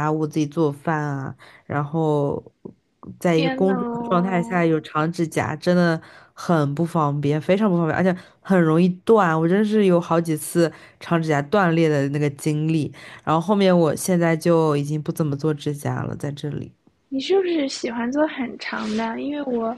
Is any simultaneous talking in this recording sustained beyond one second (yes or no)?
yes